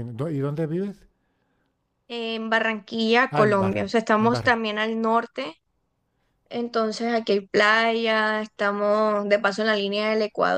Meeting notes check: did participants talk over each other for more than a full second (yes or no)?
yes